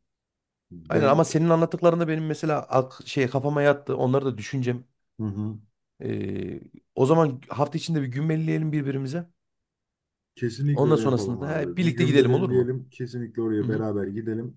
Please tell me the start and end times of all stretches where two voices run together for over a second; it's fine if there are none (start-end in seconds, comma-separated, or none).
10.7-12.7